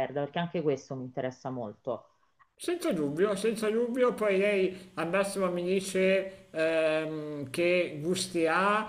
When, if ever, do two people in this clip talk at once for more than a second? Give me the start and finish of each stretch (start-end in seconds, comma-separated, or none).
none